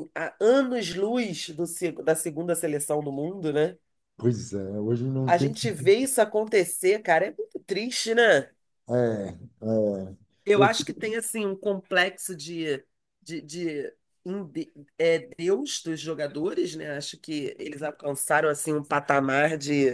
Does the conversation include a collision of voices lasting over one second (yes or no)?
no